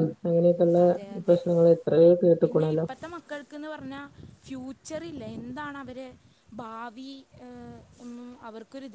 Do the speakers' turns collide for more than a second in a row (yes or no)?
no